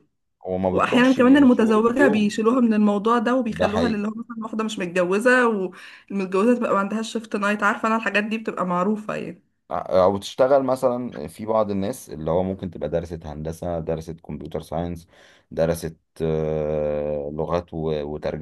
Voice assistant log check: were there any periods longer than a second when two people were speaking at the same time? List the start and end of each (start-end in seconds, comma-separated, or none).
0.7-2.4